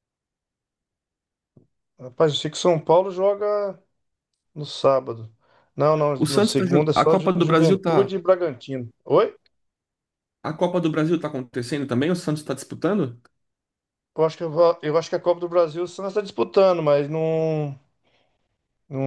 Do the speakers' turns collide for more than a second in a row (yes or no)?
yes